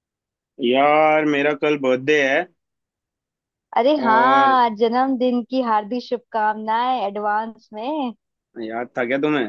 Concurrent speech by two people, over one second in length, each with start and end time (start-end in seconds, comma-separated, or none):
none